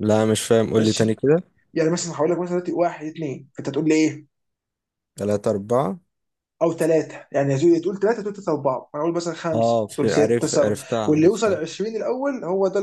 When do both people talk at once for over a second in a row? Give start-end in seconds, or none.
9.5-11.6